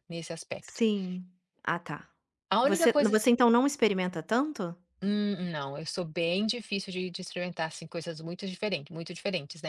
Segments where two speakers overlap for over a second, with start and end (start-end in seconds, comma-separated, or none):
none